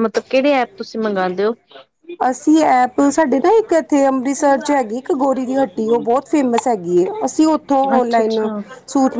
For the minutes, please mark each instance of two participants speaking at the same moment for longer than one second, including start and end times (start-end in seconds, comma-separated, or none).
none